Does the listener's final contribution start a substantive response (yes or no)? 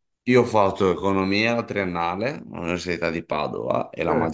no